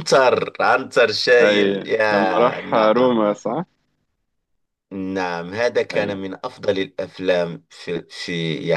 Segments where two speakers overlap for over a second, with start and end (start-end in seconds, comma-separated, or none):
1.4-3.2